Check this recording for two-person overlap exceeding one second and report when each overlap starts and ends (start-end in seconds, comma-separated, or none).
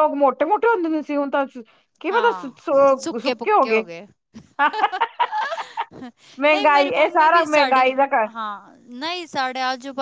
6.5-7.9